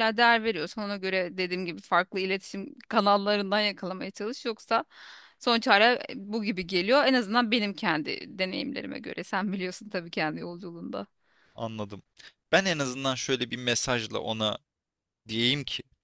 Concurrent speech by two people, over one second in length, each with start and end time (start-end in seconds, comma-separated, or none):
none